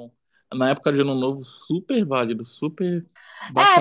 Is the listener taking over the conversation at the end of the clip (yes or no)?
yes